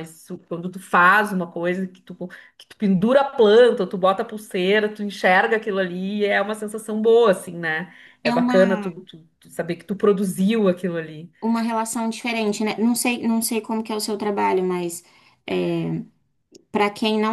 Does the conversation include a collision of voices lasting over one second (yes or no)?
no